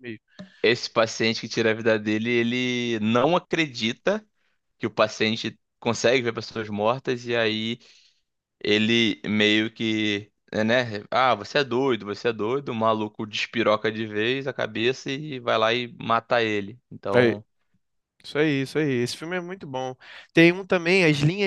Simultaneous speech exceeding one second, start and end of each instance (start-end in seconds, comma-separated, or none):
none